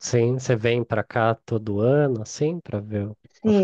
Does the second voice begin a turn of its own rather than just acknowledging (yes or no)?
yes